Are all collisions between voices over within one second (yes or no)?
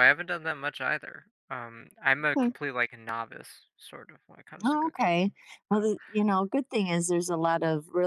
yes